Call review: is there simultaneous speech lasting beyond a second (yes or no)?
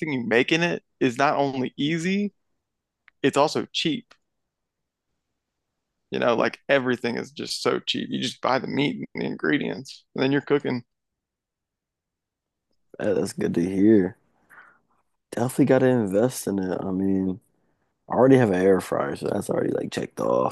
no